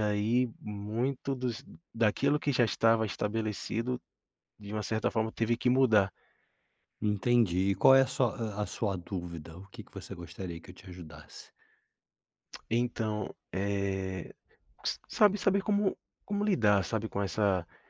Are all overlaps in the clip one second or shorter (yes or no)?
yes